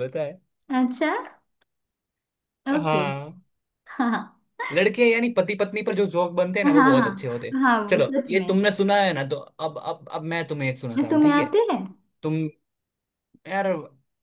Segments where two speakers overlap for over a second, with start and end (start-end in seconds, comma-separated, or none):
6.6-8.5